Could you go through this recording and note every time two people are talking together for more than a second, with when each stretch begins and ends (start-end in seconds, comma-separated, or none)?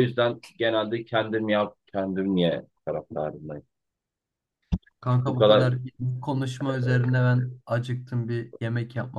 none